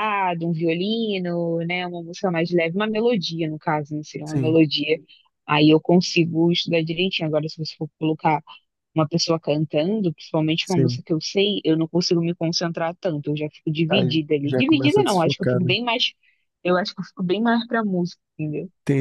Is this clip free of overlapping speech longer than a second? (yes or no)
no